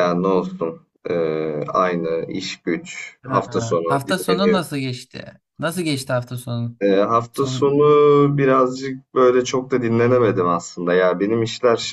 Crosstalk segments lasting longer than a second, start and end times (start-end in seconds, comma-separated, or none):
3.2-4.7